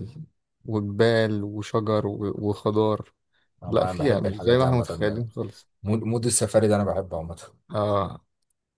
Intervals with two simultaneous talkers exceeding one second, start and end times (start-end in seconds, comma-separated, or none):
3.7-5.2